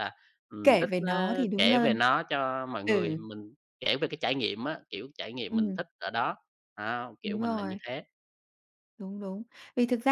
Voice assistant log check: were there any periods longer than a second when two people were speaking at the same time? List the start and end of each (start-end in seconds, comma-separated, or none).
0.6-2.0